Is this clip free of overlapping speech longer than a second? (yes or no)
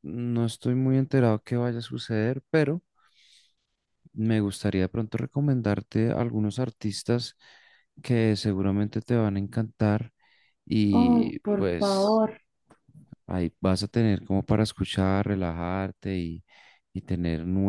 no